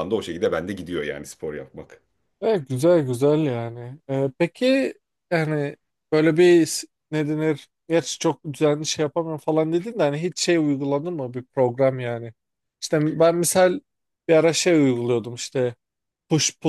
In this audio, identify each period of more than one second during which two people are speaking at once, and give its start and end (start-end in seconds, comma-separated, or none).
none